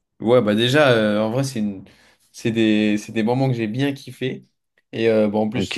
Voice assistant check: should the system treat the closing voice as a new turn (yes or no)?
no